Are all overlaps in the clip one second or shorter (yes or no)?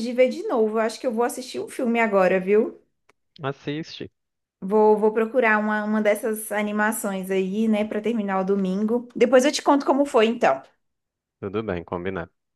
yes